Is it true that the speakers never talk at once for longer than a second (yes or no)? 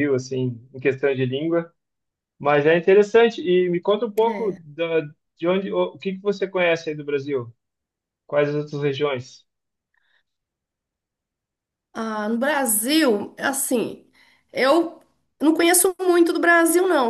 yes